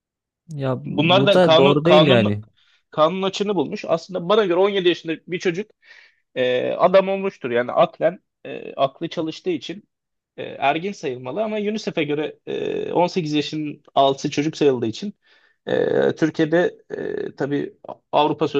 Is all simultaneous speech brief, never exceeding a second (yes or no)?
no